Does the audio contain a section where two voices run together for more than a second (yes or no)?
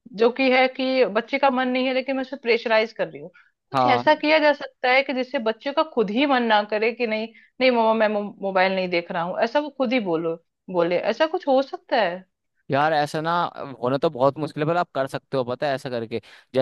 no